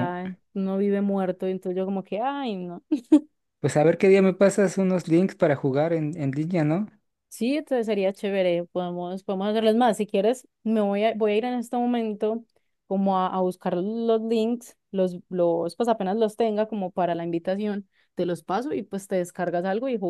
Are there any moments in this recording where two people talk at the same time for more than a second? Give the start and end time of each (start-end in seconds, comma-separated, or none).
none